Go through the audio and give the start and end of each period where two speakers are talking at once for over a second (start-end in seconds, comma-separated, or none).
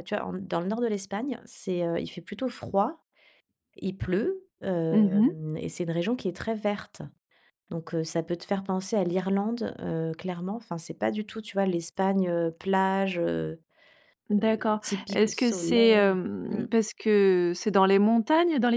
14.4-16.6